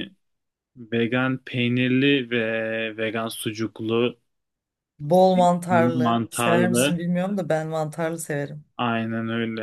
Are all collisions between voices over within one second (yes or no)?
no